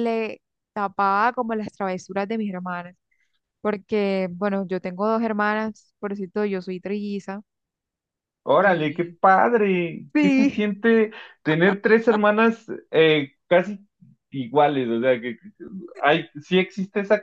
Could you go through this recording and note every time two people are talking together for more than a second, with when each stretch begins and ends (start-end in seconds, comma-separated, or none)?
none